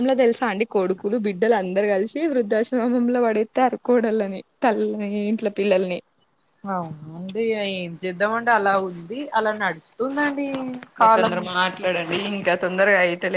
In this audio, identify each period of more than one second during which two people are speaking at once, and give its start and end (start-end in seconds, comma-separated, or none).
none